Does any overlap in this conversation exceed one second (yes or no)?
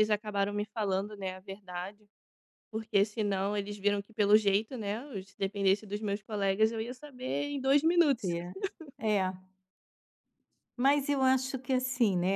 no